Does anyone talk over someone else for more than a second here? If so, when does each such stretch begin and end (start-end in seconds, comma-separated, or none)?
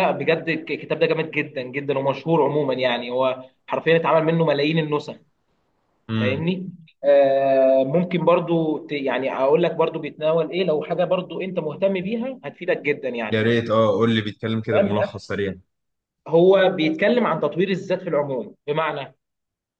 none